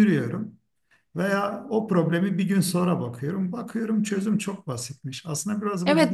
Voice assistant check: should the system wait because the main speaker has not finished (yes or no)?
no